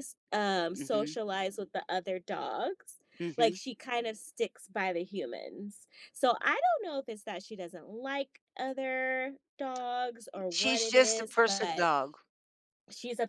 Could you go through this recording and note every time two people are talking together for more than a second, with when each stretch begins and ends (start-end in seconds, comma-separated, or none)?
10.5-11.9